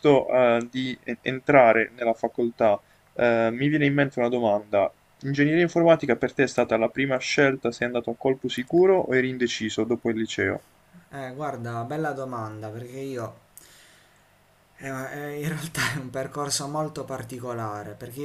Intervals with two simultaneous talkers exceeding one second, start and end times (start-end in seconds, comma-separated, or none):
none